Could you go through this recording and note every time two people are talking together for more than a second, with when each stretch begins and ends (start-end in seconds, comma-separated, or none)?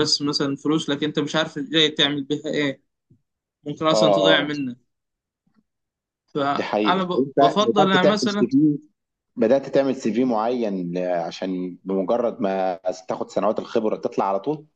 6.6-8.5